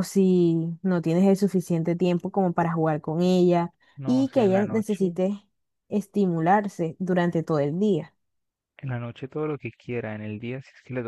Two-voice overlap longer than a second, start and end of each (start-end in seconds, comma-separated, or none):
4.0-5.2